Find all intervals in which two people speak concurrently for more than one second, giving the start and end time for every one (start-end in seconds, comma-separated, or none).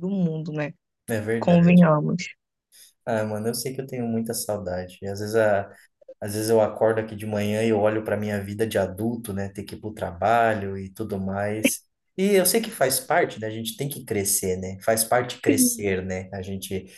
none